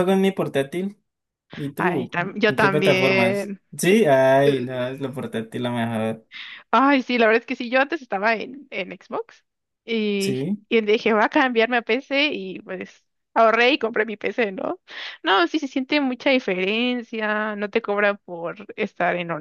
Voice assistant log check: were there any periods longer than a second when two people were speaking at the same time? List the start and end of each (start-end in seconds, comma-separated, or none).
1.8-3.6